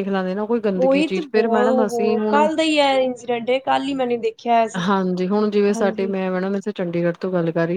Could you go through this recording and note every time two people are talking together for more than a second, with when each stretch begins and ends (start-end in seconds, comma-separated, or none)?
0.8-2.5